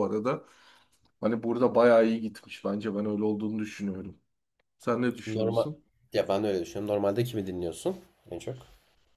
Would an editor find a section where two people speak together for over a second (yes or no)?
no